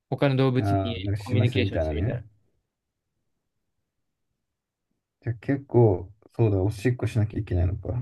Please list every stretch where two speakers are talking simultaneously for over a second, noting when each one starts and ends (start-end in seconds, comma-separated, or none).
0.6-2.2